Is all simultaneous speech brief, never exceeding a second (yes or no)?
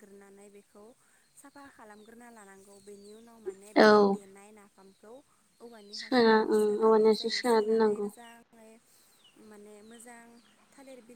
no